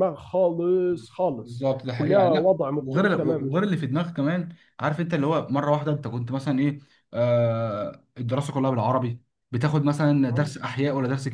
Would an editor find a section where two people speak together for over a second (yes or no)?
yes